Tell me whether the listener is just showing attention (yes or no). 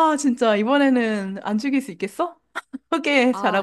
no